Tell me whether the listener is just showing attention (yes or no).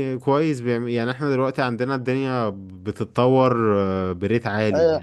no